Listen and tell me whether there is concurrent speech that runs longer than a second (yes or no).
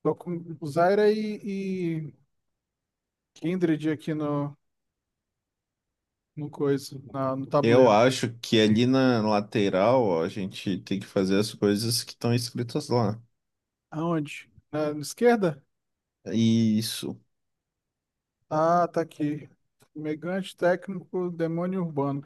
no